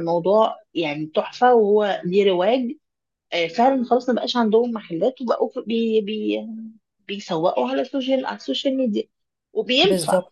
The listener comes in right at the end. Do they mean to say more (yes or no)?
no